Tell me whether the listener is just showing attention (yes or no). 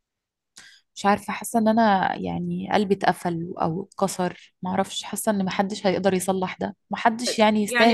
no